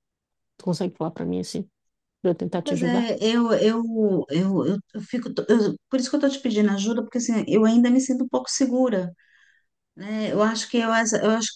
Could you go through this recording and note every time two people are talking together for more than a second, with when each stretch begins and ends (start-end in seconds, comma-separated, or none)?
none